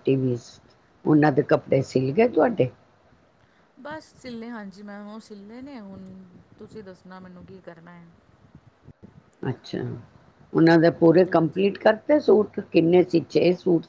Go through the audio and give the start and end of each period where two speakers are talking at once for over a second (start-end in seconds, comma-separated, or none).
none